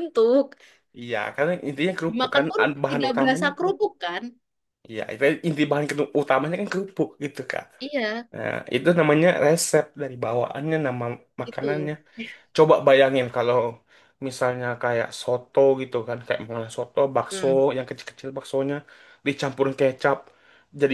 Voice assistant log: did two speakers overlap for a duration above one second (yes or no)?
yes